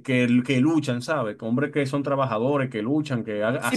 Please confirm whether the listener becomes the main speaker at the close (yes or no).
yes